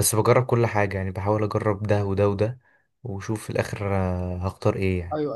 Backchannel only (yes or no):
no